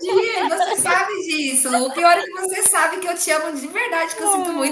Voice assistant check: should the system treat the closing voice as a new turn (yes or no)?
yes